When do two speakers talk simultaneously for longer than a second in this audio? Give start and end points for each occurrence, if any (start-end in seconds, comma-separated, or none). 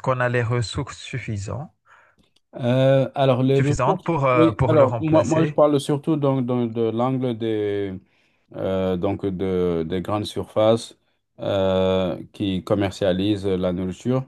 3.5-5.6